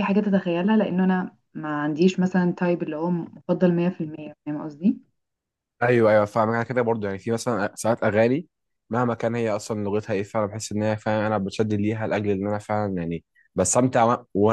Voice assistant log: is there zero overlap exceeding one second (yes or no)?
yes